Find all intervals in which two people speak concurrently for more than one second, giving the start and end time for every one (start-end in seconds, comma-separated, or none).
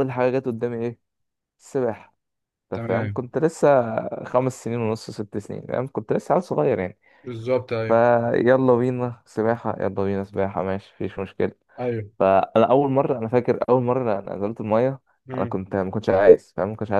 none